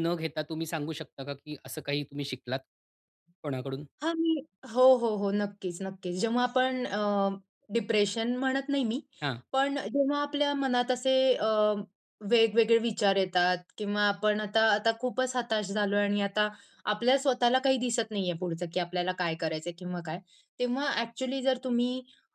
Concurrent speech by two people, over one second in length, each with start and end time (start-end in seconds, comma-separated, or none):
none